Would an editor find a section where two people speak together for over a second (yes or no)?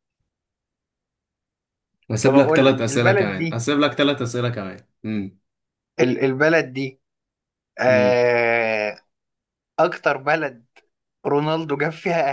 yes